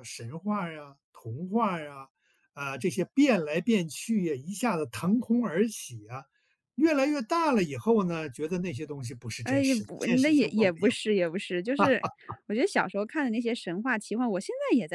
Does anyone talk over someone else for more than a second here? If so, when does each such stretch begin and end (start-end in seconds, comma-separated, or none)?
9.4-11.0